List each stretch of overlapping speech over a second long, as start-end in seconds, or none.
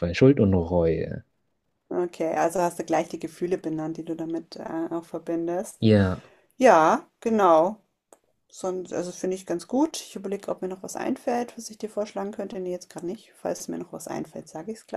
none